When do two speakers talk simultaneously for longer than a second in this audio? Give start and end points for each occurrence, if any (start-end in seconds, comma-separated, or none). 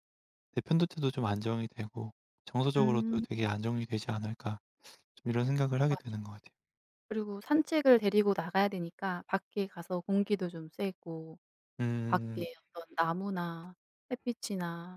none